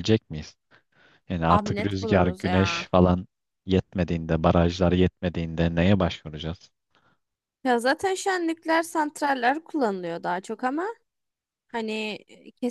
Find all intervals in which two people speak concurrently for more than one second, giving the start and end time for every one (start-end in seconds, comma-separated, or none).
1.5-2.9